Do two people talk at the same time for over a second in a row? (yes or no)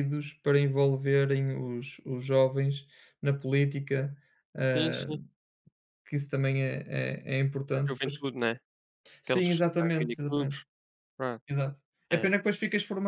yes